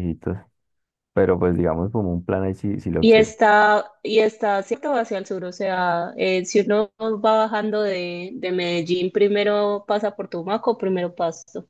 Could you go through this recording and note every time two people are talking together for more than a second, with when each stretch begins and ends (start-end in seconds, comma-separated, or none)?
none